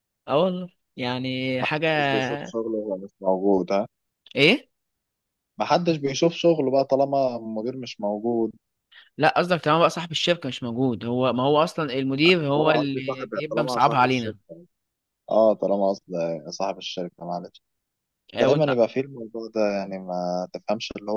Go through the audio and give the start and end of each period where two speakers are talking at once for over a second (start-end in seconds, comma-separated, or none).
12.5-14.4